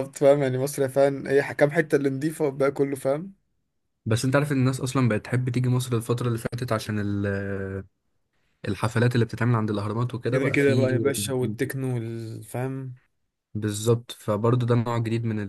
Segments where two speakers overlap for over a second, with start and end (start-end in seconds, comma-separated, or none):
none